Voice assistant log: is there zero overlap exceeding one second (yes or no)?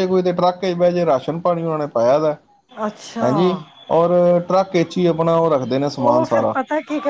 yes